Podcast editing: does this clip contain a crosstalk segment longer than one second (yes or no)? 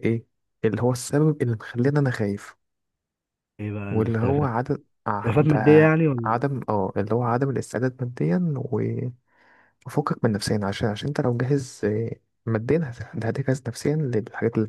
no